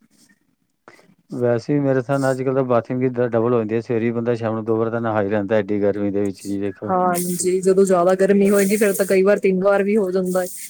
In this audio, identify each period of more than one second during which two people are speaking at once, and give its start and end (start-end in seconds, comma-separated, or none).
none